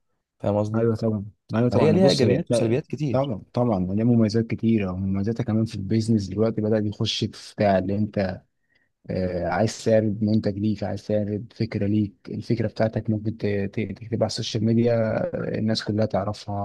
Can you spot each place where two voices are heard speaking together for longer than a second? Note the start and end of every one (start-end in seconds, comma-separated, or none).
1.7-3.3